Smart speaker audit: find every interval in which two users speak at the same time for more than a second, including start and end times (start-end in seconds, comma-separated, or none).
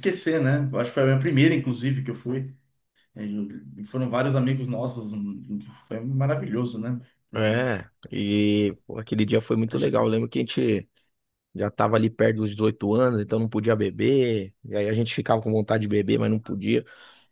none